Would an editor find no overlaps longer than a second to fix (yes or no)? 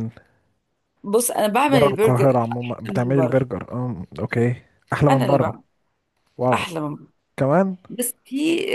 no